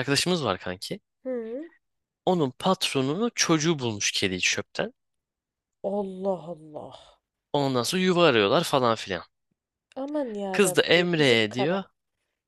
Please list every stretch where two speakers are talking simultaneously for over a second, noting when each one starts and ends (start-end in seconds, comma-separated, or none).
10.5-11.8